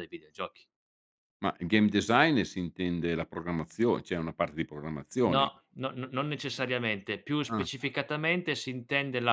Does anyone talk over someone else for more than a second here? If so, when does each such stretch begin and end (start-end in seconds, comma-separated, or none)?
none